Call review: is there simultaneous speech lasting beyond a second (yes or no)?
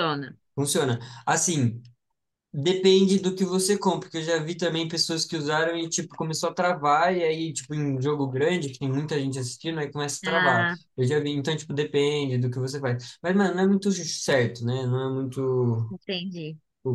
no